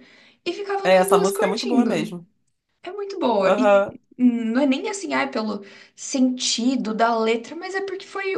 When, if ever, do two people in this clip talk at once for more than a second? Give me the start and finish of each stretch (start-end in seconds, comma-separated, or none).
0.8-2.1